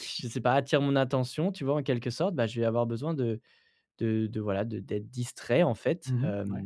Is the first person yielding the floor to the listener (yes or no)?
no